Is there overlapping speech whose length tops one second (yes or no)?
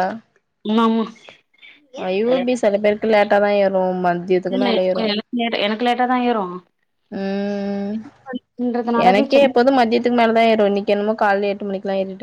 no